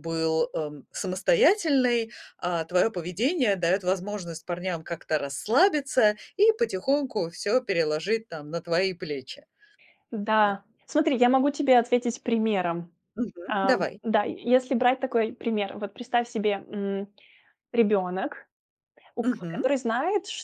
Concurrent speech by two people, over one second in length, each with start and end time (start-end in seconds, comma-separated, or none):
none